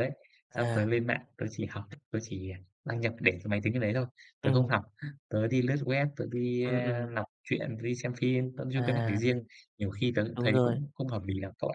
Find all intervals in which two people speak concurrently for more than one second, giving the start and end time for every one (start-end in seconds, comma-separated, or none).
none